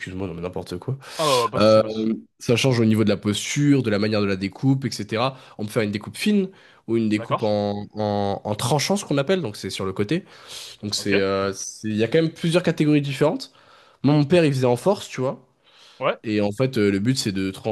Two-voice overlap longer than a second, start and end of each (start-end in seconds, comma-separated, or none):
none